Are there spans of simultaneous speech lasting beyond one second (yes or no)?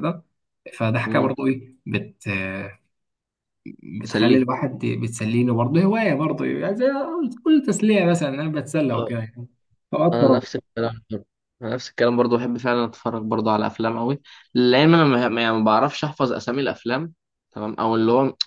no